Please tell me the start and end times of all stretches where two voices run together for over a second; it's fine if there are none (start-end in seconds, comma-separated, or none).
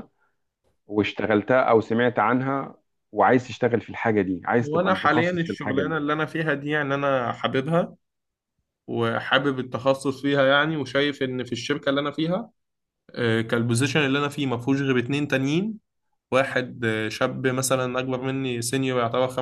4.6-5.9